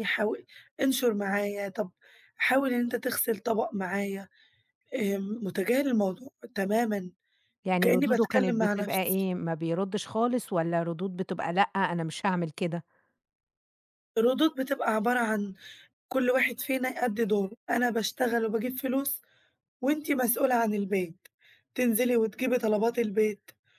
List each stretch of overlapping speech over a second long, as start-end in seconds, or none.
7.7-9.3